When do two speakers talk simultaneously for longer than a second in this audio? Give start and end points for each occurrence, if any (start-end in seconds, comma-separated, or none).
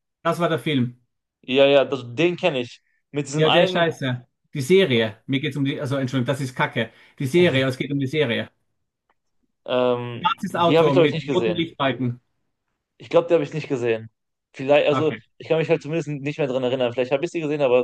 10.2-11.6